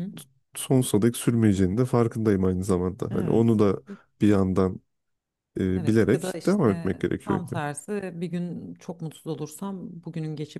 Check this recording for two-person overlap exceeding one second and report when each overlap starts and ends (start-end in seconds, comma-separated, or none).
5.8-7.5